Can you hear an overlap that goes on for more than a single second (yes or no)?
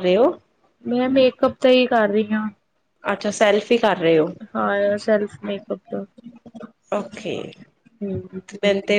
no